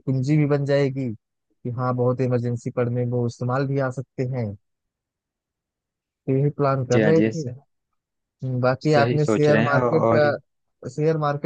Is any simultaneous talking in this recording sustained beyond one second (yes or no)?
yes